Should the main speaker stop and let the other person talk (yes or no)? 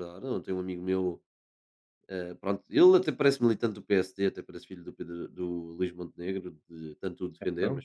no